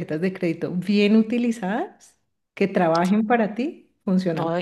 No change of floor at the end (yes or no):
no